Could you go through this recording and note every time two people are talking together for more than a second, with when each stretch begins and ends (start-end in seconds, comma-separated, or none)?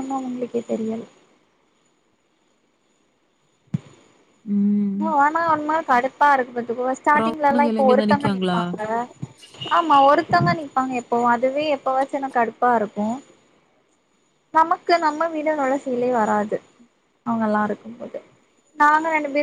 7.1-8.6